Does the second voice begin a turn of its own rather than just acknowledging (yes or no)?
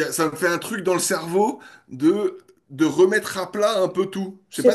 yes